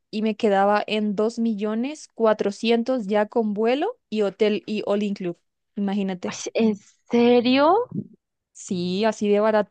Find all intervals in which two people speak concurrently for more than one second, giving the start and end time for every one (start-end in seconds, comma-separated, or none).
none